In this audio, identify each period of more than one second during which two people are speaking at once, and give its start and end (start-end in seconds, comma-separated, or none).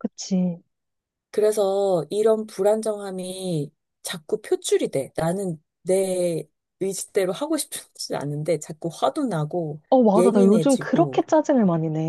9.9-11.2